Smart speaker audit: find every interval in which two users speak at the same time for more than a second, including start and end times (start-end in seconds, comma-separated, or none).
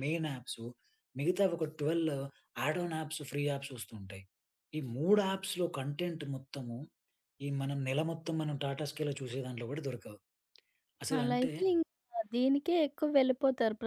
none